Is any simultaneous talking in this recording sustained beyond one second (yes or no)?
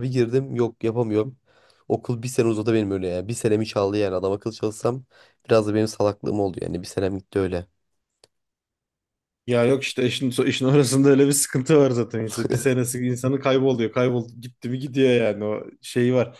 no